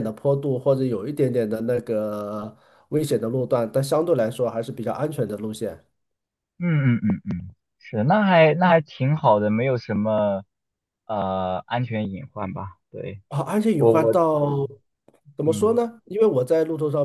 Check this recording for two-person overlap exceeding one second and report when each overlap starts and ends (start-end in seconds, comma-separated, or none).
none